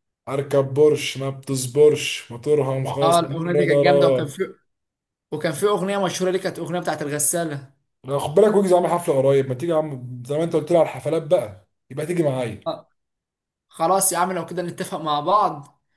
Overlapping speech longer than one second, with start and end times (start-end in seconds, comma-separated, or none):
3.0-4.4